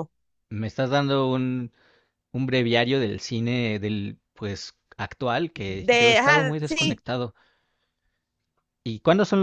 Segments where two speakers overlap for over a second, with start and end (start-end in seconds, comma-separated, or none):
5.5-7.0